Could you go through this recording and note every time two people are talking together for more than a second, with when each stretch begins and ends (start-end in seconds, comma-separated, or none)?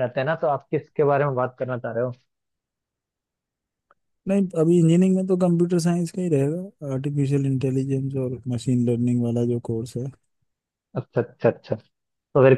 none